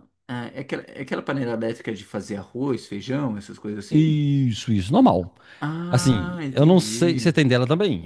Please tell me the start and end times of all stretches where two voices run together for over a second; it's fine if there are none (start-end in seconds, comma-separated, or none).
5.9-7.3